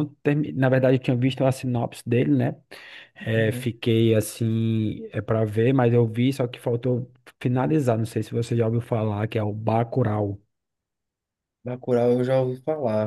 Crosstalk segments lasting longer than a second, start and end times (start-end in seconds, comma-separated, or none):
none